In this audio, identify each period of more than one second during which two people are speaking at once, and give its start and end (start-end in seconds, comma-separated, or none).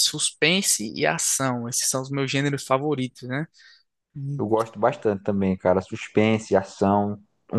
none